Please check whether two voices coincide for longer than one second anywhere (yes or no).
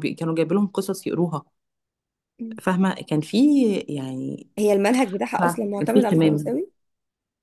yes